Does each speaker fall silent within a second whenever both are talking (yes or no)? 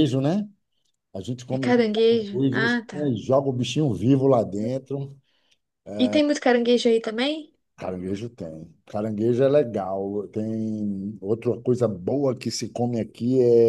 no